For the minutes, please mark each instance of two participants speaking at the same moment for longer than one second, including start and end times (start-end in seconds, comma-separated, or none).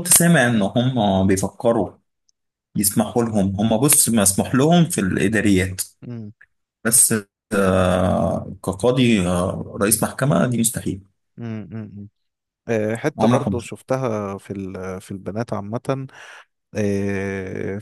none